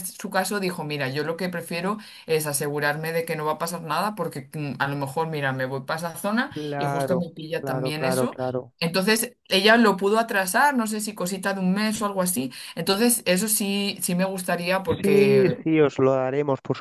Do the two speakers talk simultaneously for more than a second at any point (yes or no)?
yes